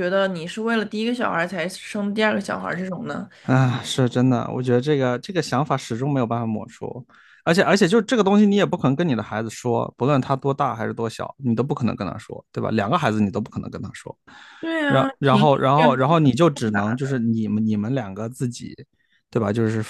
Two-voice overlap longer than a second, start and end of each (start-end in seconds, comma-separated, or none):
14.9-16.1